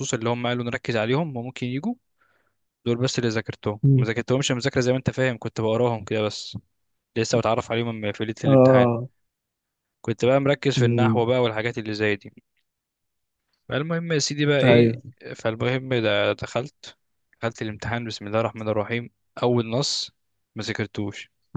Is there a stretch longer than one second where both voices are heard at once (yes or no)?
no